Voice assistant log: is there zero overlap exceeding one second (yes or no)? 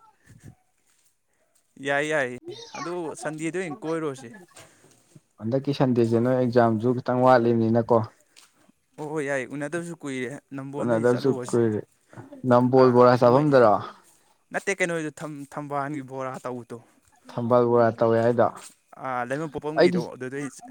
yes